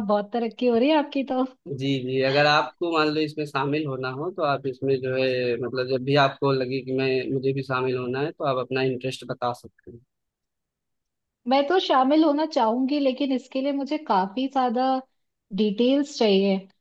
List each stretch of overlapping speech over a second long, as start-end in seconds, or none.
none